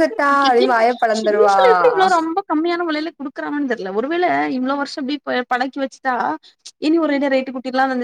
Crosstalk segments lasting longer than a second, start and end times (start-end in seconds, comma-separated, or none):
none